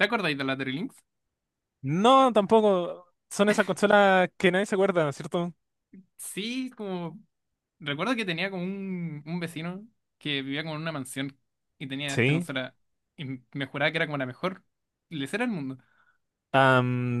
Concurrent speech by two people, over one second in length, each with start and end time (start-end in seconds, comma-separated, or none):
none